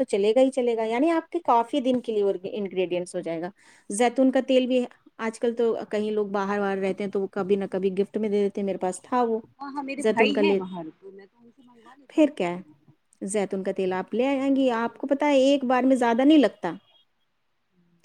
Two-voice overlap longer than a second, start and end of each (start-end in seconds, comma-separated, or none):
13.5-15.0